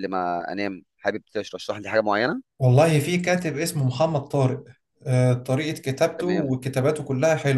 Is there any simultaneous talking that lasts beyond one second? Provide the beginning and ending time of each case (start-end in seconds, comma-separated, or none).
none